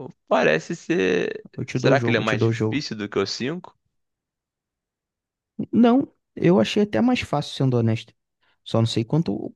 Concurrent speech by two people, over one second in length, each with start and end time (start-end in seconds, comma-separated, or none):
1.6-2.9